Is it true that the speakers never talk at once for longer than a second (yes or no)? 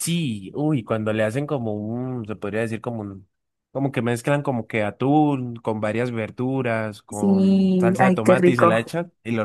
no